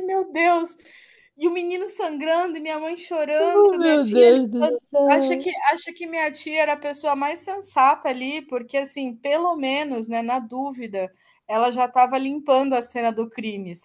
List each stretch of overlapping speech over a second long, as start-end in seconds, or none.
3.4-5.5